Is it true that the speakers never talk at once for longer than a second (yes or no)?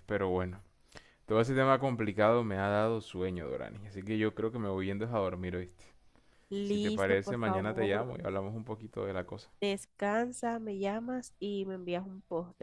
no